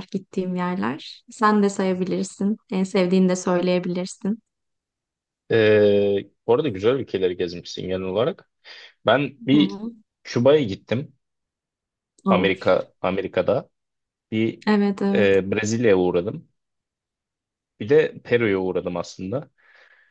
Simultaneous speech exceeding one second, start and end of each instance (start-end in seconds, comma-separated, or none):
none